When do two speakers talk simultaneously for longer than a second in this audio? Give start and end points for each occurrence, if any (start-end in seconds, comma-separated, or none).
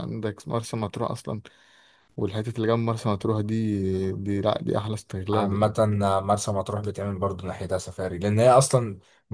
none